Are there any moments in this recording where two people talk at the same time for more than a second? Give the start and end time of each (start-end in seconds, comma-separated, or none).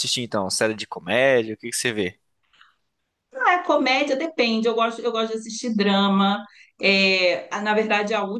none